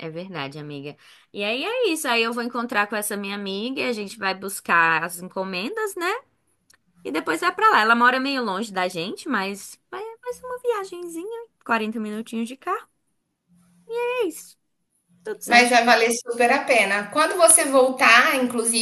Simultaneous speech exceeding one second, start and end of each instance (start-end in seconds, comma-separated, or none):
none